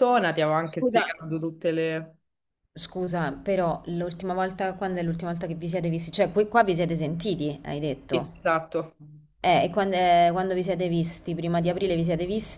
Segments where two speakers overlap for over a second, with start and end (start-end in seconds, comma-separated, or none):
none